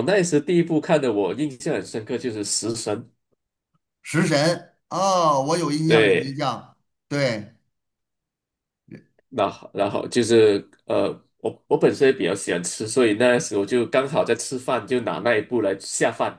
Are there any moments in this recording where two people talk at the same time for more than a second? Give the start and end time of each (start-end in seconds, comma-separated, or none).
none